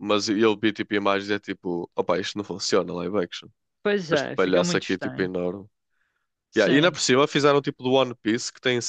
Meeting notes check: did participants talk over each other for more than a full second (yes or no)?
yes